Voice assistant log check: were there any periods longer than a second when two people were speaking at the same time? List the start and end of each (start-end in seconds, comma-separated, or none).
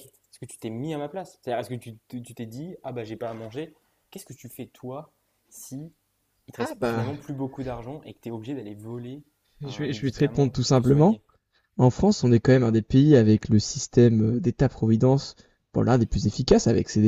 9.6-11.2